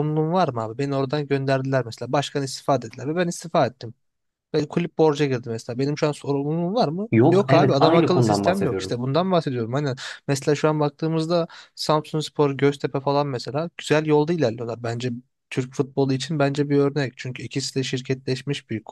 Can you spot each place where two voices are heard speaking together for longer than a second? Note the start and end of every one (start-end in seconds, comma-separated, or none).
7.1-9.0